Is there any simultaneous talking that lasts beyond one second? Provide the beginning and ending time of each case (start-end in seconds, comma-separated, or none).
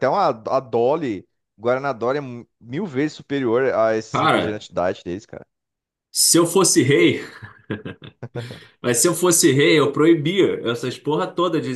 none